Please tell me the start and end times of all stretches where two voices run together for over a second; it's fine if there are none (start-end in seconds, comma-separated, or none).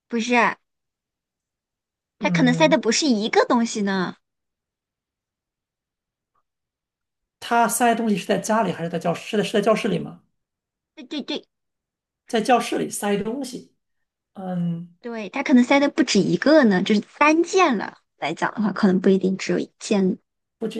none